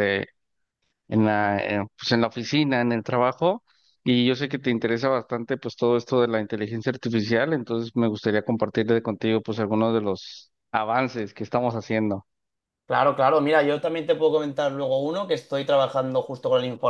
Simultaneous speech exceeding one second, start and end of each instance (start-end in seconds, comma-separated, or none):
none